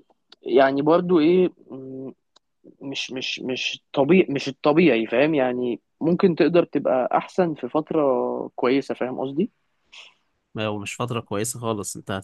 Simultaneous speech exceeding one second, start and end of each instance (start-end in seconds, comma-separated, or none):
none